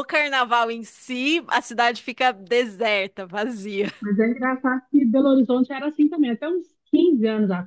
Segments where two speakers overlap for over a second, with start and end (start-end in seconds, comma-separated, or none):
none